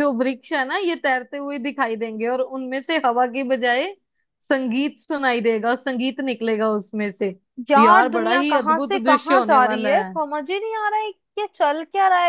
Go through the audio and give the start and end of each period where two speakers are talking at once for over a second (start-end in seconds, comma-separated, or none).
7.8-10.1